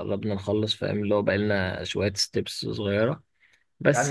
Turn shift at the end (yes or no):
yes